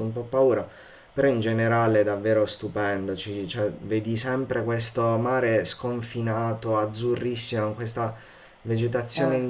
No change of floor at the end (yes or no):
yes